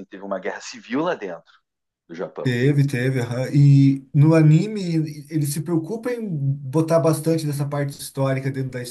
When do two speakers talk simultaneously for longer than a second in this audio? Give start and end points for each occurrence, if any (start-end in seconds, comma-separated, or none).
none